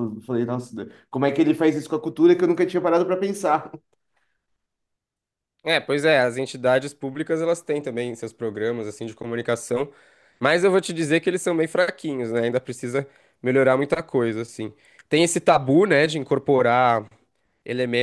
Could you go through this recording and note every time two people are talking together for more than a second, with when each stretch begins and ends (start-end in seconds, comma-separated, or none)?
none